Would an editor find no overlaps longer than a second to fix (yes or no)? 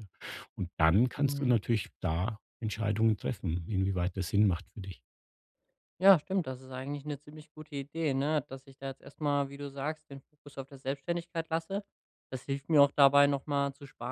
yes